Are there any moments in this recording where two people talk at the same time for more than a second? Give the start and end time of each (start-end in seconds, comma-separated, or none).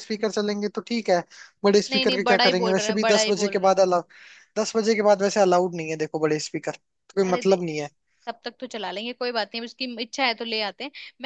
1.9-3.9